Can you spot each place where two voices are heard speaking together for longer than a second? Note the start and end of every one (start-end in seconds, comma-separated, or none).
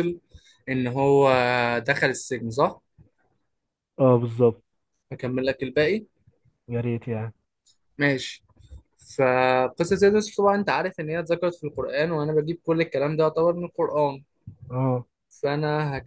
none